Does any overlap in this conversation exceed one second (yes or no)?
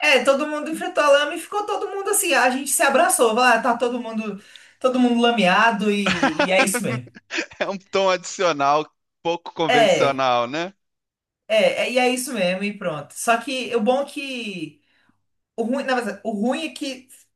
no